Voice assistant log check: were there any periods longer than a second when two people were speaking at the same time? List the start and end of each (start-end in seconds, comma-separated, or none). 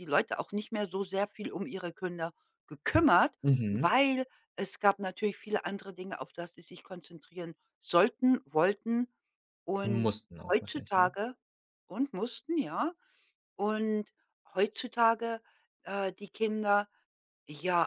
9.8-11.1